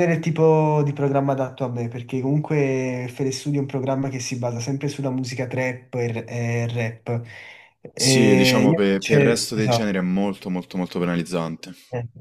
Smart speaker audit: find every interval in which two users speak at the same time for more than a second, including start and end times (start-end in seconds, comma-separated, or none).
7.9-9.9